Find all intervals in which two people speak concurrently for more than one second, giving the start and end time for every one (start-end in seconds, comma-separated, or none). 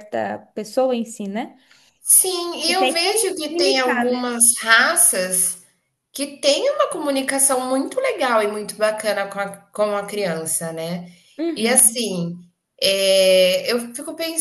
2.7-4.3